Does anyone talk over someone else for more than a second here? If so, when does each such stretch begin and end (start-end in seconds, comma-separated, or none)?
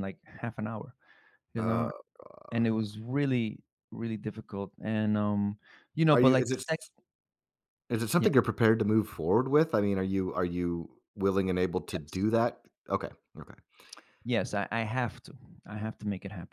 none